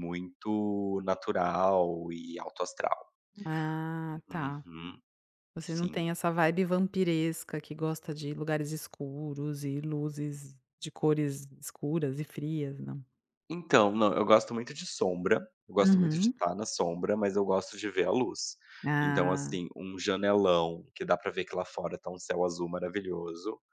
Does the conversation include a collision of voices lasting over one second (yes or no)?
no